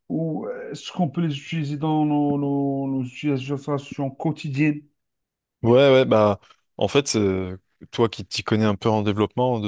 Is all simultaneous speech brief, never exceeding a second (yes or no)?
yes